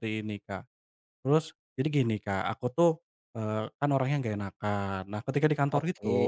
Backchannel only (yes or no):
yes